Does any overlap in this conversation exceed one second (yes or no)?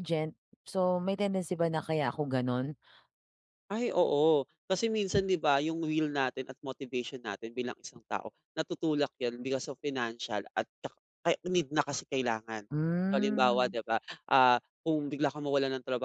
no